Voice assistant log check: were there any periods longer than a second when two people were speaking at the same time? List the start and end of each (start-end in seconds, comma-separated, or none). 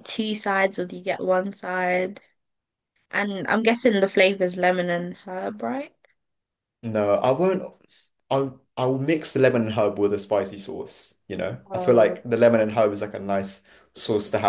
none